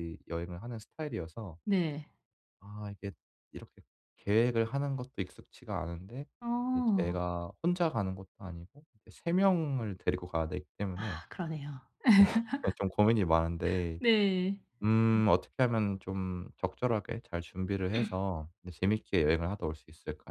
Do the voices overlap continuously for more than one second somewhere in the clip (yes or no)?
no